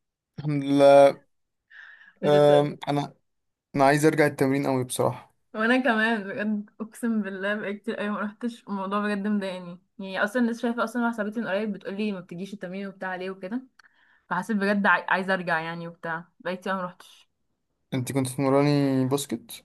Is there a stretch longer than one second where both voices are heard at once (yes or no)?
no